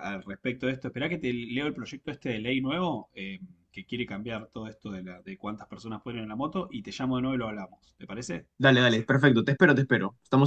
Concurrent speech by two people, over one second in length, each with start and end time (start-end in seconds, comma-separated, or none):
none